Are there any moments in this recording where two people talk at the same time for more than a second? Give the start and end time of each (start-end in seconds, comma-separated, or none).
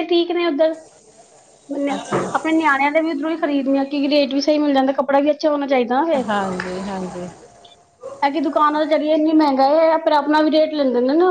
none